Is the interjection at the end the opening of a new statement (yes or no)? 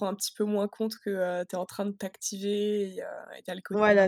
yes